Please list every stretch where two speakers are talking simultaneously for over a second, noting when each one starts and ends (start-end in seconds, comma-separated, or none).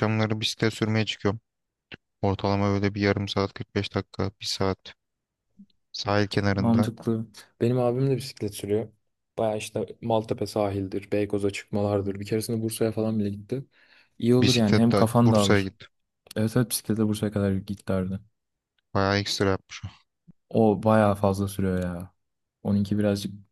14.4-15.7